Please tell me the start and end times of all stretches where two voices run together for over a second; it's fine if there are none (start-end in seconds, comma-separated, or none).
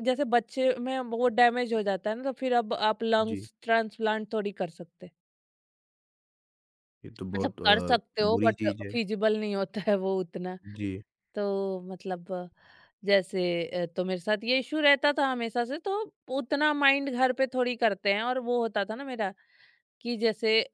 7.3-8.9